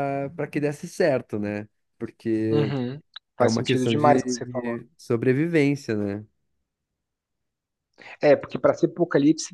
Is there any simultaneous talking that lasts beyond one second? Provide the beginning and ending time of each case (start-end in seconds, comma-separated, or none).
3.4-4.8